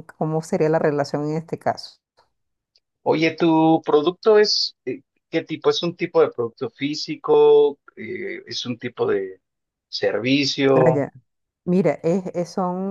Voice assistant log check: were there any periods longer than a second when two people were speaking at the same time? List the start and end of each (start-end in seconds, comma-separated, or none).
none